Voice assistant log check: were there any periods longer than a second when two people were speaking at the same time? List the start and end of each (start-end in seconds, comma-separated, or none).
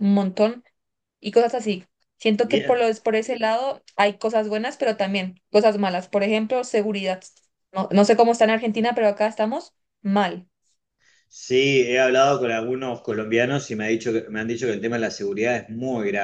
none